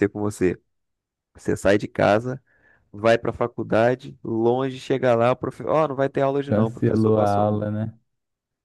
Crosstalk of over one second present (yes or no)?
yes